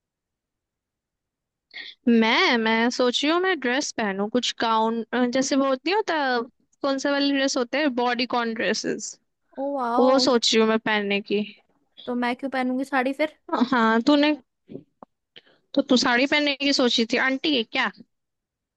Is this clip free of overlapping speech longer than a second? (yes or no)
yes